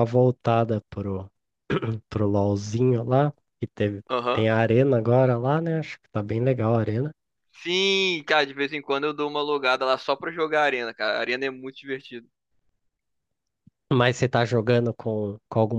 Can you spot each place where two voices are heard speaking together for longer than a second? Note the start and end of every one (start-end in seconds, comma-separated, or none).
none